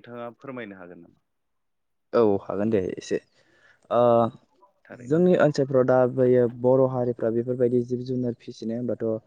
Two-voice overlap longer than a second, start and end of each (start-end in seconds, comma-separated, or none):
none